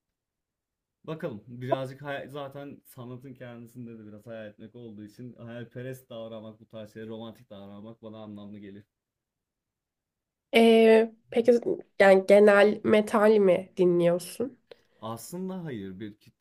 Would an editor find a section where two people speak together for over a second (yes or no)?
no